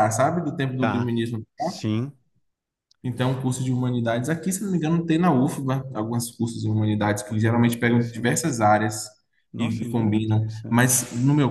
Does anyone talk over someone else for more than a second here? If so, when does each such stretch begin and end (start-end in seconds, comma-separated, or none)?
7.3-8.5, 9.6-11.0